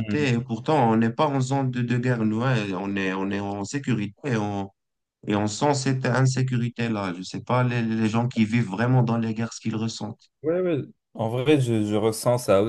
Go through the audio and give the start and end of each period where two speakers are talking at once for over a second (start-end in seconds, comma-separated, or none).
none